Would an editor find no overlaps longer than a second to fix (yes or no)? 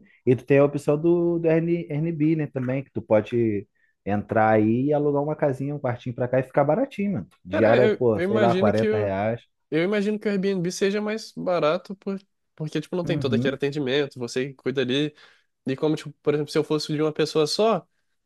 no